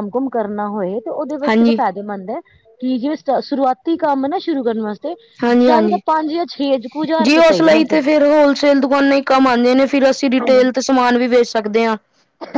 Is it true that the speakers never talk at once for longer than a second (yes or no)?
yes